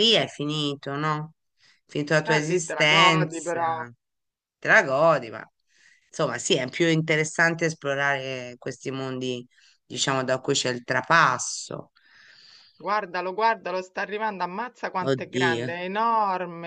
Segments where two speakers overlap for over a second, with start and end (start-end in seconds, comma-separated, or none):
2.3-3.6